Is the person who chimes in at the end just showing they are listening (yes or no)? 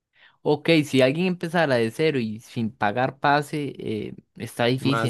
no